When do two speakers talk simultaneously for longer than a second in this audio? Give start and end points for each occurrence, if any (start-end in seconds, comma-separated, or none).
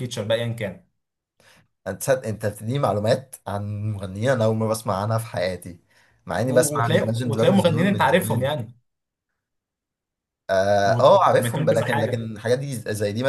6.5-8.5, 10.8-12.3